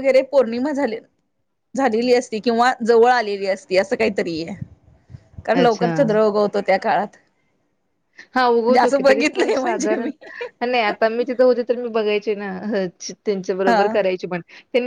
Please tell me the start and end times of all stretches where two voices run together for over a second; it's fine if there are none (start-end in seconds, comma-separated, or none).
8.5-10.1